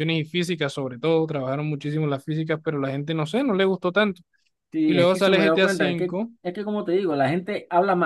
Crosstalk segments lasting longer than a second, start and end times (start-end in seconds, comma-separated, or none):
4.8-6.3